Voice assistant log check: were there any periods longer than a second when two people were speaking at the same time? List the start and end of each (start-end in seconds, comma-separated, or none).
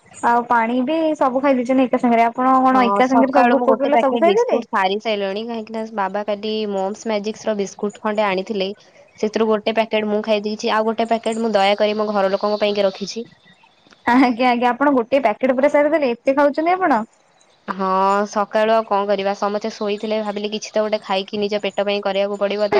2.8-4.6